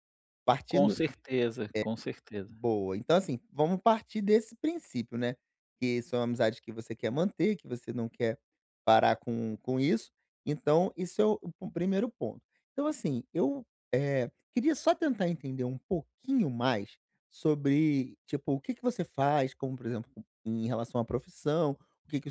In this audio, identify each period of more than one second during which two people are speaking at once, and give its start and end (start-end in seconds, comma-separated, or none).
none